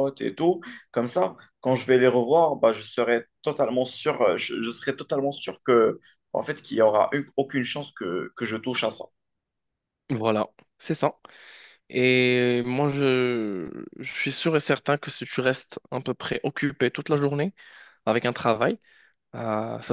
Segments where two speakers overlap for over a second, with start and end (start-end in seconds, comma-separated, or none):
none